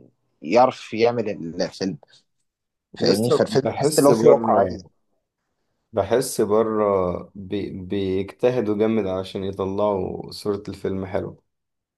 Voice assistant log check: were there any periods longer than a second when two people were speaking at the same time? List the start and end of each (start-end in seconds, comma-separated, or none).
3.0-4.8